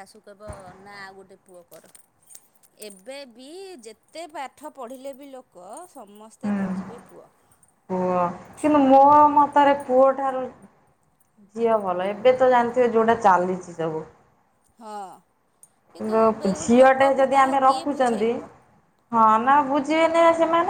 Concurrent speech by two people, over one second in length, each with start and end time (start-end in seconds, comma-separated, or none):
16.0-18.3